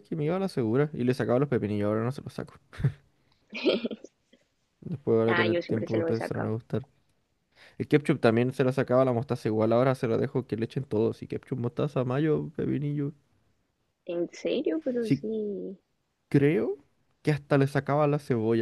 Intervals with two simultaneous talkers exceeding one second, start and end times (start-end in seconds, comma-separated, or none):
5.3-6.5